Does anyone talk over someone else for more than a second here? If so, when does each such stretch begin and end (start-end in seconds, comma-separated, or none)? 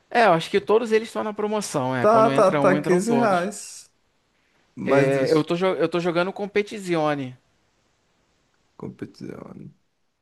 2.0-3.5